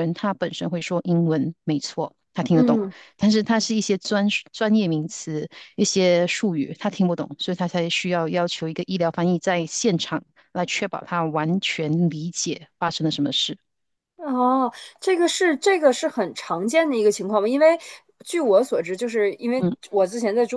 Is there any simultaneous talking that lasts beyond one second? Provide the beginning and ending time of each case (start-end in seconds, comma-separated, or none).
none